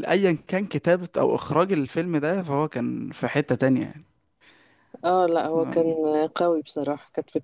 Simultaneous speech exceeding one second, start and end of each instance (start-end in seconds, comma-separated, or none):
none